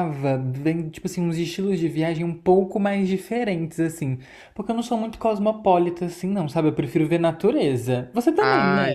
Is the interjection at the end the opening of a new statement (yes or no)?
yes